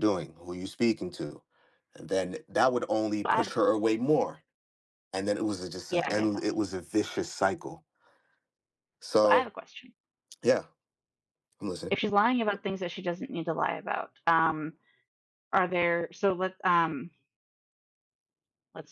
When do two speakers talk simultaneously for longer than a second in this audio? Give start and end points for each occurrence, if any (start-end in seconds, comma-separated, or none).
none